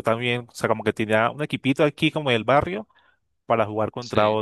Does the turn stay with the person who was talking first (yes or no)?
yes